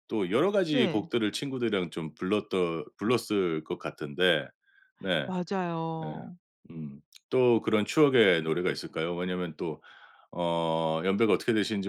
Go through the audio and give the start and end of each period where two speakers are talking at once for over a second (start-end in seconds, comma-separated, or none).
none